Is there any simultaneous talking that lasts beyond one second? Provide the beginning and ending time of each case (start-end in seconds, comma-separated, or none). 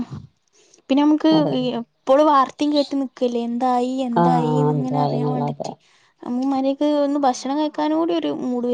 4.2-5.7